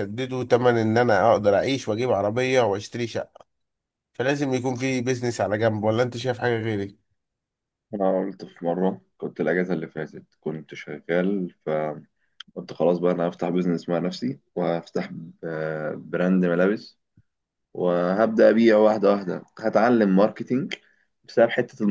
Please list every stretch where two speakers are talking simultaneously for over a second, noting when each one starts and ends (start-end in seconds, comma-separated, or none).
none